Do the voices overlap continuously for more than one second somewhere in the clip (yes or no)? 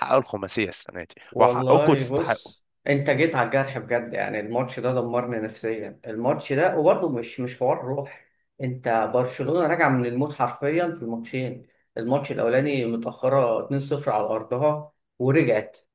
yes